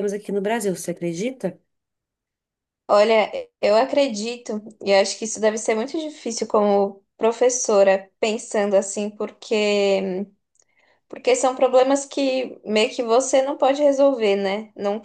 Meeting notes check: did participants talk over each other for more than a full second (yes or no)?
no